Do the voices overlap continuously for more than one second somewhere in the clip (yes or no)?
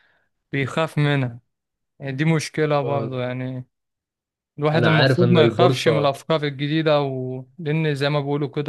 yes